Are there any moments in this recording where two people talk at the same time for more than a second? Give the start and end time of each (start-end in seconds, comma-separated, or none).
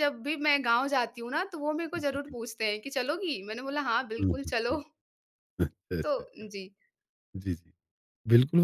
none